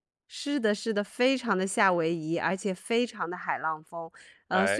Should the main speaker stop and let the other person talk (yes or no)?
no